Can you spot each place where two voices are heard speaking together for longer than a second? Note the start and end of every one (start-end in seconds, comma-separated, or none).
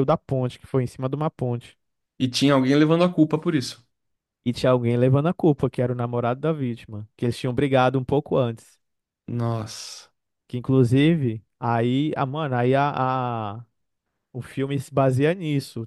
none